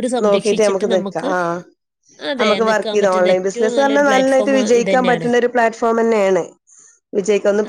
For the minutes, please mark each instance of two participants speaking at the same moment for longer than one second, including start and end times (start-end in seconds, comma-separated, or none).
2.4-5.3